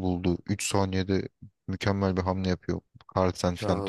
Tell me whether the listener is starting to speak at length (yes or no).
yes